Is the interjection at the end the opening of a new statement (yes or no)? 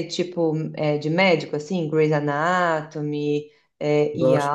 yes